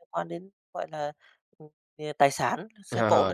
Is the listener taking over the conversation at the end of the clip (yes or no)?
yes